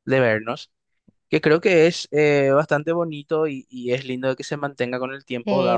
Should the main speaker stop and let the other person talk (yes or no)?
yes